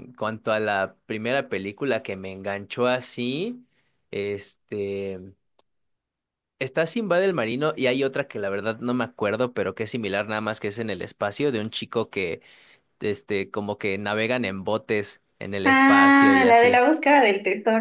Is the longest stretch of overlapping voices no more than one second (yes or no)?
no